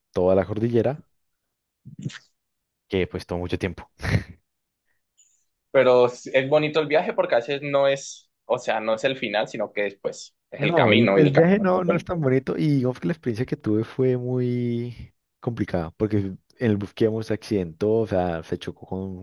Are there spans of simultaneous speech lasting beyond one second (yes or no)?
yes